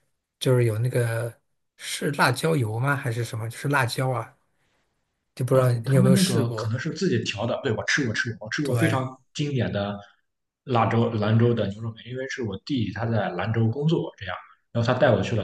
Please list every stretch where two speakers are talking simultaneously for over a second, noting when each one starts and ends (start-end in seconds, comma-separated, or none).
5.5-6.8